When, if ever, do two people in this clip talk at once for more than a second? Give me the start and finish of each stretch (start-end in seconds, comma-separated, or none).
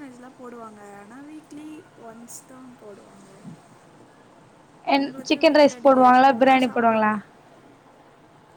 5.0-7.1